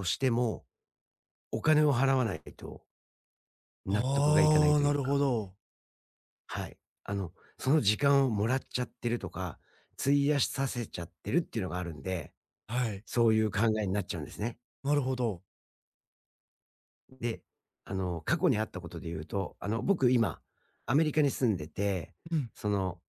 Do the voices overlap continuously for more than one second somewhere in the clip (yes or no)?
yes